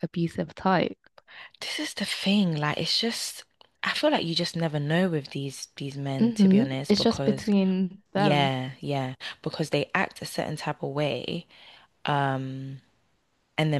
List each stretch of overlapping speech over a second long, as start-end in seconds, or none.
6.2-7.5